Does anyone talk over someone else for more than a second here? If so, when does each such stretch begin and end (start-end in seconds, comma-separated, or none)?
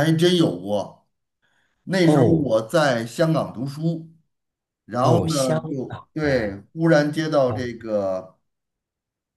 5.0-6.6